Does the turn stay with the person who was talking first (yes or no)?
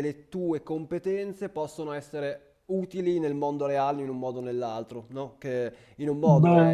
yes